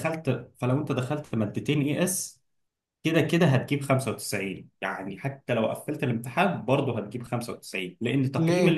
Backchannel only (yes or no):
yes